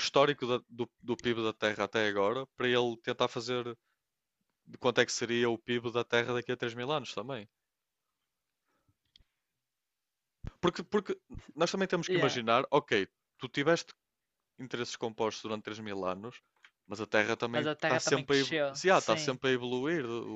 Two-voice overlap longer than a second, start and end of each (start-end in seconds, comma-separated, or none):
17.5-19.4